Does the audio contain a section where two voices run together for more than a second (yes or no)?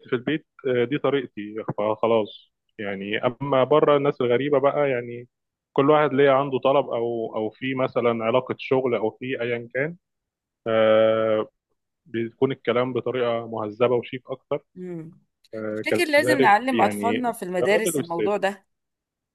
yes